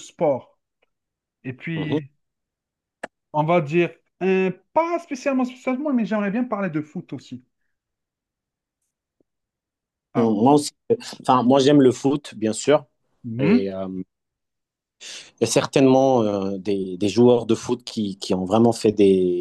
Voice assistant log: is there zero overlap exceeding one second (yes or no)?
yes